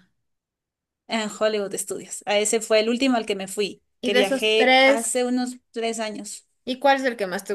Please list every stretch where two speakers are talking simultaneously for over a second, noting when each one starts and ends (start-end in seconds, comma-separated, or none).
4.0-5.3